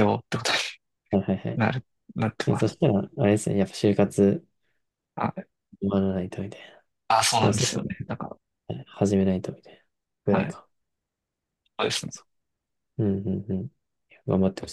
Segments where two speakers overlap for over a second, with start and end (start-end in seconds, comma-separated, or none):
none